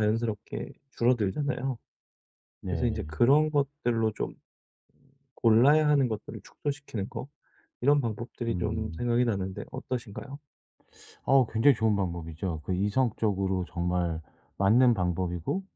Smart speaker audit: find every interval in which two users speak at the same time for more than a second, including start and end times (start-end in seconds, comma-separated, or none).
none